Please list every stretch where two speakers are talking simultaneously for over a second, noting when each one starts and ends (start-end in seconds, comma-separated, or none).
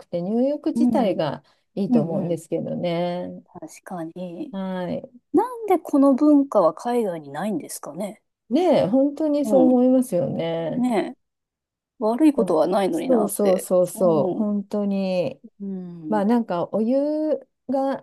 12.3-14.5